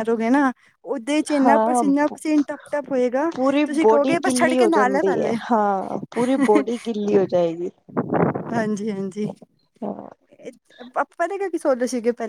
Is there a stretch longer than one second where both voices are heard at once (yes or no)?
yes